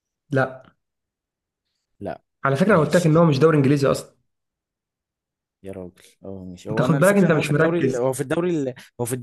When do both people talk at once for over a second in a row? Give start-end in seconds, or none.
6.7-8.1